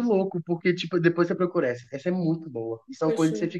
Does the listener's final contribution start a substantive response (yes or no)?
no